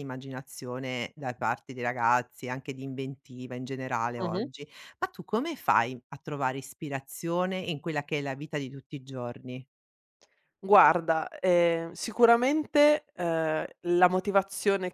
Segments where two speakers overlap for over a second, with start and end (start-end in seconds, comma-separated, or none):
none